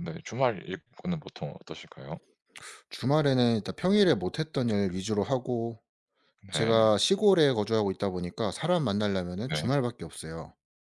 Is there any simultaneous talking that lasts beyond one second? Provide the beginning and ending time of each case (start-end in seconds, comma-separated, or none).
none